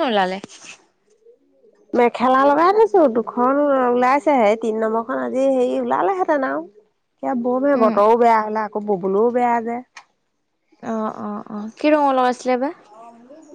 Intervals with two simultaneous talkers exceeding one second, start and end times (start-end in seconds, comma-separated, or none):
none